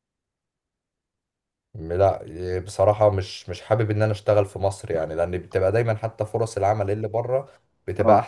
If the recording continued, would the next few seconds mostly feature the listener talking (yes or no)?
no